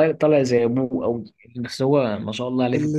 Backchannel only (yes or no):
no